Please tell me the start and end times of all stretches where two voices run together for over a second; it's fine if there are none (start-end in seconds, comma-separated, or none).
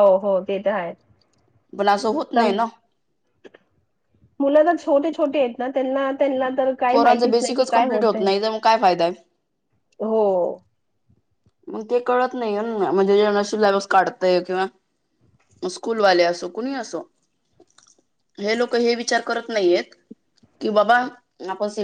6.9-8.3